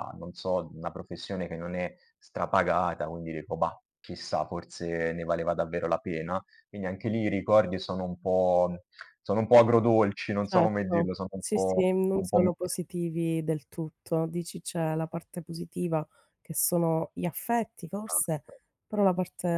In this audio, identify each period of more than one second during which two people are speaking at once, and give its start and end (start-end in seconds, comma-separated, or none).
10.4-12.8